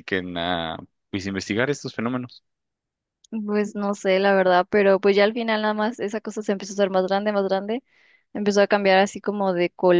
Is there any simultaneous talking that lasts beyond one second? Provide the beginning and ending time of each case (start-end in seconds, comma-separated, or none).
none